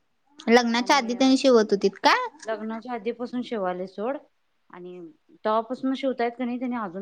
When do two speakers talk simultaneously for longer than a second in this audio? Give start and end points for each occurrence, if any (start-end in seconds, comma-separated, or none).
none